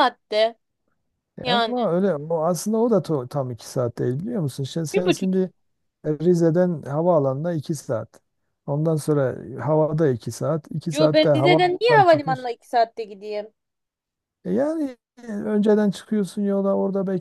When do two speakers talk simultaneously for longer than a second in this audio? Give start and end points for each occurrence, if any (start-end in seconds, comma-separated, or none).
10.9-12.5